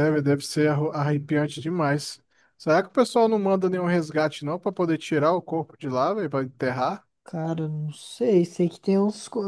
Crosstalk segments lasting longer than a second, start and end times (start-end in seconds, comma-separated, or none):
none